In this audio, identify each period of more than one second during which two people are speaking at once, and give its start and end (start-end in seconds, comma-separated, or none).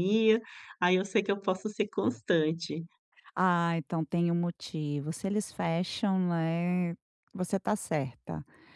none